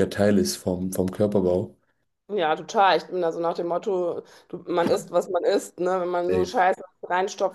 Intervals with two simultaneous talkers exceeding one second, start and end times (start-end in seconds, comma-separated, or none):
none